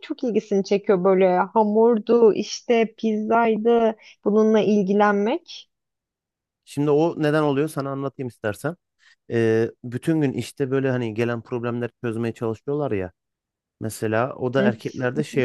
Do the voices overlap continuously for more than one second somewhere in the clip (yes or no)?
no